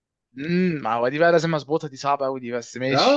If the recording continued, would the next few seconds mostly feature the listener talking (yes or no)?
yes